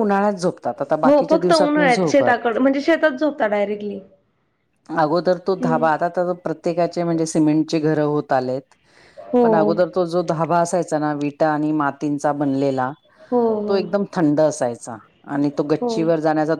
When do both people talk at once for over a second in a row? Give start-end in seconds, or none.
1.0-2.6